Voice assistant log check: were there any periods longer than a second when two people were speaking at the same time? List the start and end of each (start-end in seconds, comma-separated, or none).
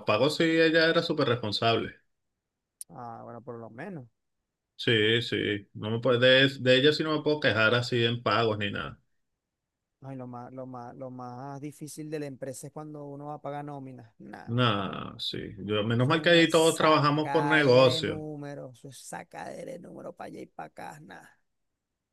16.0-18.2